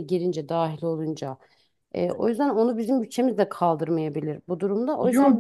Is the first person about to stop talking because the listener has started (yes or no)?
yes